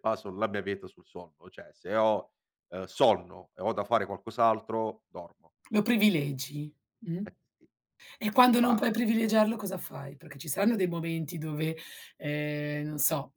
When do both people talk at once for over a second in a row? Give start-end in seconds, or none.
none